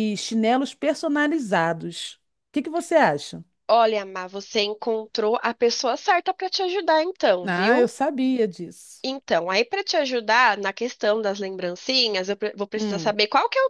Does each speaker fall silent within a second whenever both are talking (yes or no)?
yes